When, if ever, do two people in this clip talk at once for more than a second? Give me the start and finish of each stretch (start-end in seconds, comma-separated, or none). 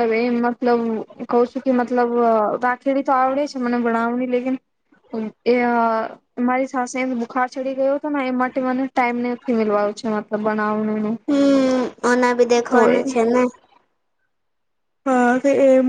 none